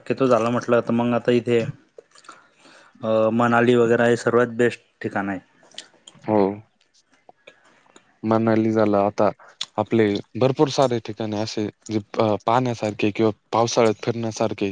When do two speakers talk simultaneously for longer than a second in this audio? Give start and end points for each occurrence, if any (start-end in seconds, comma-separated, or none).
none